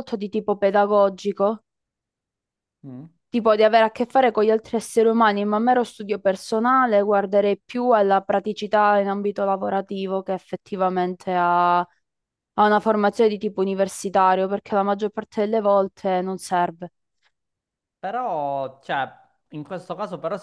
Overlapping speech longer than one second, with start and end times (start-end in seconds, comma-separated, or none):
none